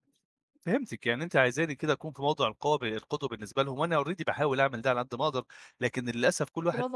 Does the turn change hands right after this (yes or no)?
no